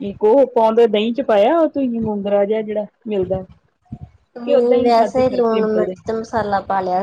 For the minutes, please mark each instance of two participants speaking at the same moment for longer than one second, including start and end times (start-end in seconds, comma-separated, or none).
4.5-5.9